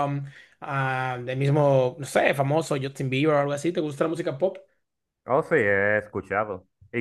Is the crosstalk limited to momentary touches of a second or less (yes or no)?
yes